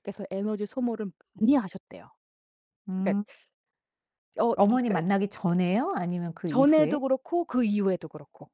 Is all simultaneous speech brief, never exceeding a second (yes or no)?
yes